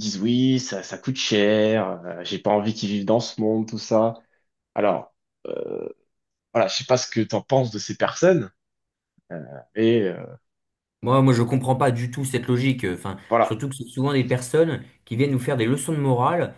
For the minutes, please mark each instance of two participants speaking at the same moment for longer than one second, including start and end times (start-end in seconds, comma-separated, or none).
none